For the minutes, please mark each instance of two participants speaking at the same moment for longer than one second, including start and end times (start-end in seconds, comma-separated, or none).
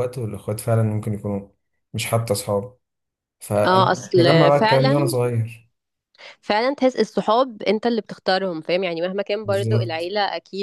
3.7-5.1